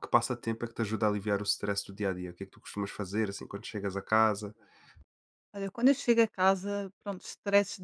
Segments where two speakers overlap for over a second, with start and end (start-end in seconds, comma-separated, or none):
none